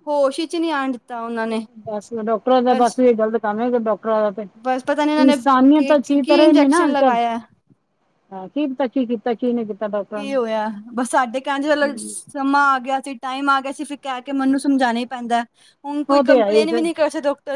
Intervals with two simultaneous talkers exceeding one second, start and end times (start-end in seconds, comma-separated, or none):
5.2-7.2